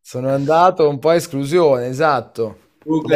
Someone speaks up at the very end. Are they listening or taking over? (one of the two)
taking over